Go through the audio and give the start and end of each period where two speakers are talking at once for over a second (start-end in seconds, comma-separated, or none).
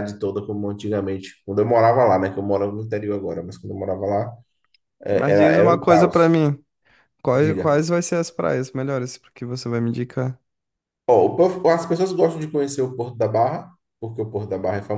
5.1-6.3